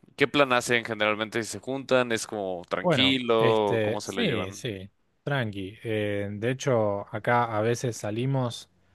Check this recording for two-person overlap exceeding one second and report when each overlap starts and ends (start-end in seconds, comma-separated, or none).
2.8-4.6